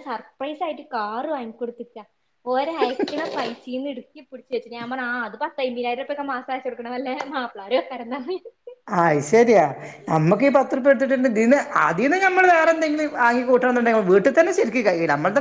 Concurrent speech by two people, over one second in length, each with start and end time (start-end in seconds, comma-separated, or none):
none